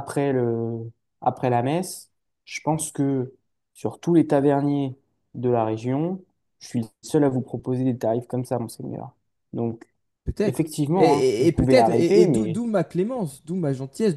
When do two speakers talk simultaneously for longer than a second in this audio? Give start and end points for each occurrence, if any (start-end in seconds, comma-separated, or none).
10.4-12.6